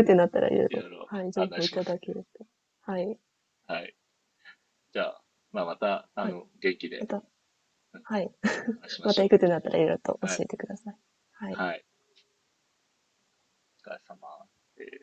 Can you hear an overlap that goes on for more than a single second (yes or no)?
yes